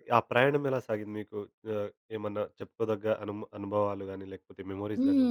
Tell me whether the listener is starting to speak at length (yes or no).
yes